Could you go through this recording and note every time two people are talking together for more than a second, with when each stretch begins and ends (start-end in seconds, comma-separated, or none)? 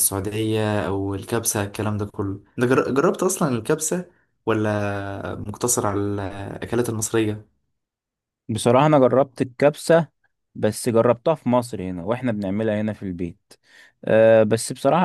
none